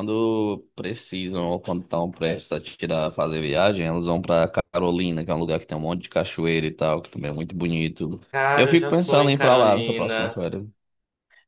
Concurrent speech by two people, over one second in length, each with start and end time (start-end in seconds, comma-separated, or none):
8.5-10.4